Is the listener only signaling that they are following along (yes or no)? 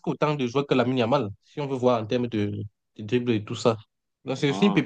yes